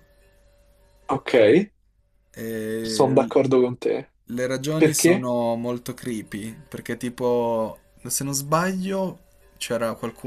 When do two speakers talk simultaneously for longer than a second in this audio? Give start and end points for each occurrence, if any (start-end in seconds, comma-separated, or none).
none